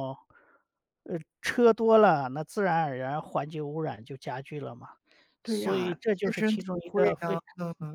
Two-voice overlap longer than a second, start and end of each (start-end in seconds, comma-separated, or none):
5.5-7.4